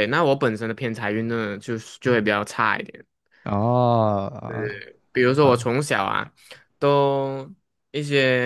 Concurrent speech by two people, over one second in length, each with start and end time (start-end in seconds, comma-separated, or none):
none